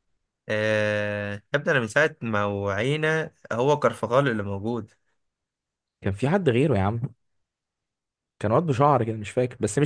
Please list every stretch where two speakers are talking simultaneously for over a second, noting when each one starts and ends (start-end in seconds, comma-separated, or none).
none